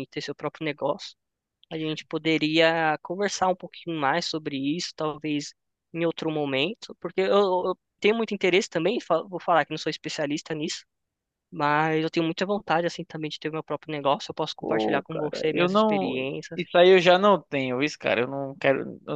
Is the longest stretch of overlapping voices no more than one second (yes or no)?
no